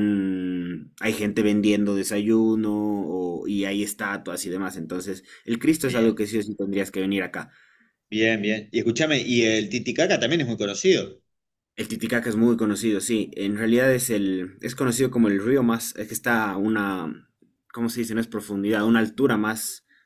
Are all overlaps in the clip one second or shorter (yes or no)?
yes